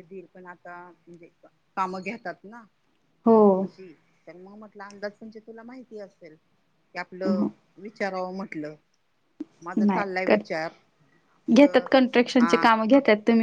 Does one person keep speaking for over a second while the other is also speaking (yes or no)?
no